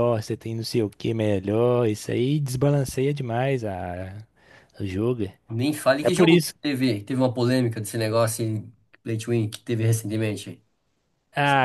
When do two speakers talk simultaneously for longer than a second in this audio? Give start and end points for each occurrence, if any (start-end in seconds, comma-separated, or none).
none